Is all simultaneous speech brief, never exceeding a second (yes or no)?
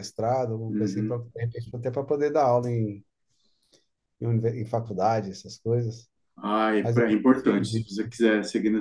no